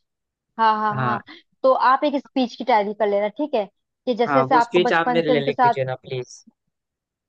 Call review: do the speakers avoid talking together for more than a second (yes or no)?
no